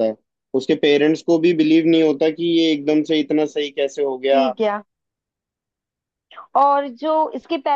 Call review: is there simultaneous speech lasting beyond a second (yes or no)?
no